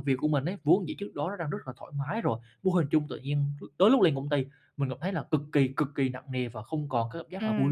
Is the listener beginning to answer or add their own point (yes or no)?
yes